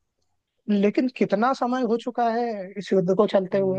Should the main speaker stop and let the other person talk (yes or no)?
yes